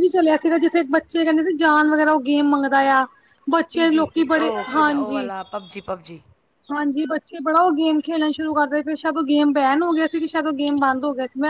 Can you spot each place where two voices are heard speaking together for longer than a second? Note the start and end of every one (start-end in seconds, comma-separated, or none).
3.7-5.3